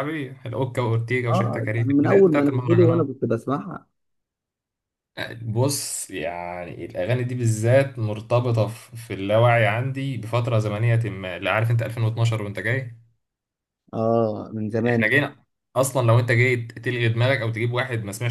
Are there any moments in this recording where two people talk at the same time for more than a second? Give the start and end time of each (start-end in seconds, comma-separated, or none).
1.3-3.1